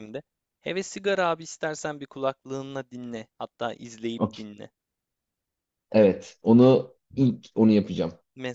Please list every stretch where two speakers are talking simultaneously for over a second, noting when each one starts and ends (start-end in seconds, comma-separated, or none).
none